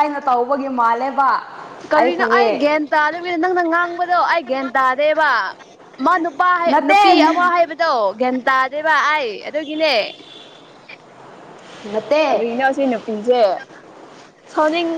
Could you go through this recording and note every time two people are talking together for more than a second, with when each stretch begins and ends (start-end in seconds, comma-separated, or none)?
none